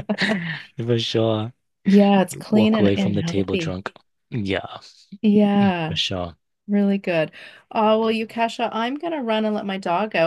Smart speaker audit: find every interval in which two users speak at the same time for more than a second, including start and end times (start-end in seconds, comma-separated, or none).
2.3-3.8